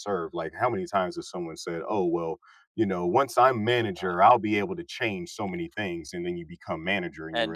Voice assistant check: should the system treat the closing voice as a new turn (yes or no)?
yes